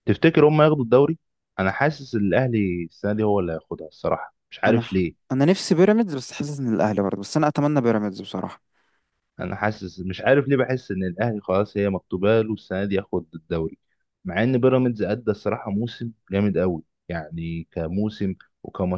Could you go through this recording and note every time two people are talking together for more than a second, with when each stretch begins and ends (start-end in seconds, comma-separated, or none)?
none